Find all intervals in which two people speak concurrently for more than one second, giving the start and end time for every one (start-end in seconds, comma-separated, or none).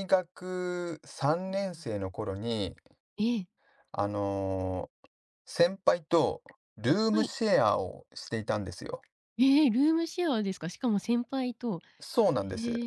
none